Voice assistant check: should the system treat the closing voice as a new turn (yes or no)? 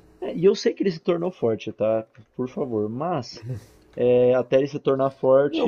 yes